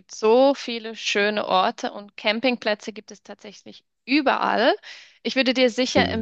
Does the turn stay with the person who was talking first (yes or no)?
yes